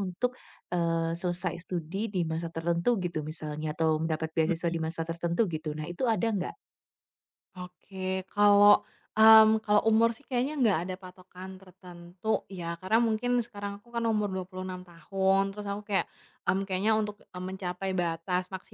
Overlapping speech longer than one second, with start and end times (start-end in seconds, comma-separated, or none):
none